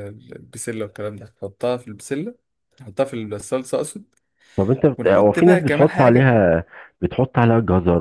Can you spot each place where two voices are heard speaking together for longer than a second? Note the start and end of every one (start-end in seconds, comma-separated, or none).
5.0-6.3